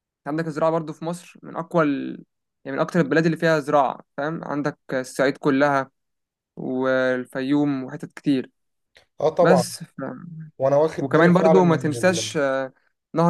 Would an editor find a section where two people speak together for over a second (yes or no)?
yes